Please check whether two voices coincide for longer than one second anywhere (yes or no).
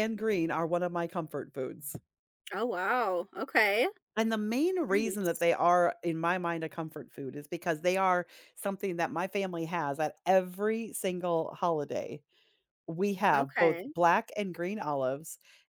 no